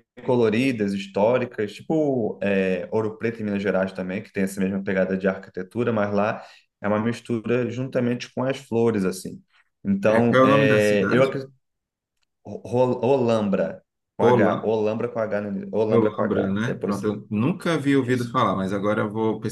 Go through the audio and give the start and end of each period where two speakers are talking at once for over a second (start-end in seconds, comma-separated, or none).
10.1-11.3, 15.9-17.1